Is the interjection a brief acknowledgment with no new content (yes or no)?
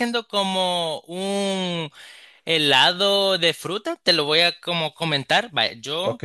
yes